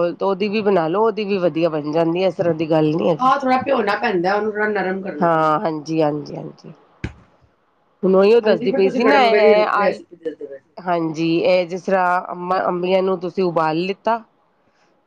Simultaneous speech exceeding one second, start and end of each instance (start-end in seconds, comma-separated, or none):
8.4-9.9